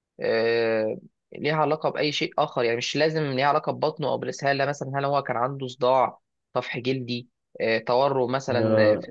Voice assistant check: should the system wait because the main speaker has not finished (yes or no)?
no